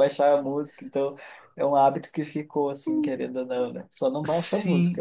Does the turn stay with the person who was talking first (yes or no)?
no